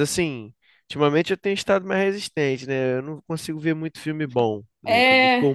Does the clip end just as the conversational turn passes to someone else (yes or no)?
no